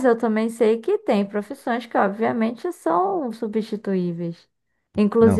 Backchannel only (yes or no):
yes